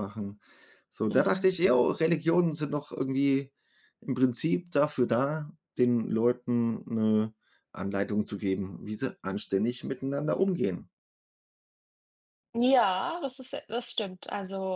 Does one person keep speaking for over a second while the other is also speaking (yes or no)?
no